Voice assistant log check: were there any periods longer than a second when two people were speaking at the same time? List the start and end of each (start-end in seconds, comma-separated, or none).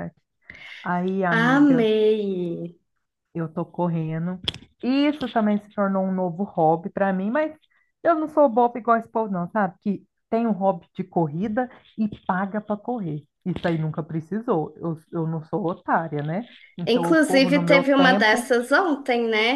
16.9-18.5